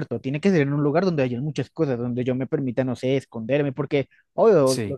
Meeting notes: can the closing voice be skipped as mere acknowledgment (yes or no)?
yes